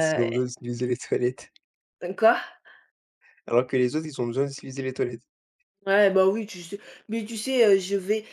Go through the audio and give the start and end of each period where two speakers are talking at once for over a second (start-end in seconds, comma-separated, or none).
none